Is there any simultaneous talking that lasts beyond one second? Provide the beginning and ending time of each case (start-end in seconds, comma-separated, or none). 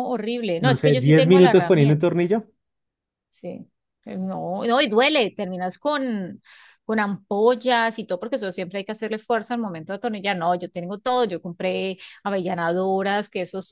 0.6-2.0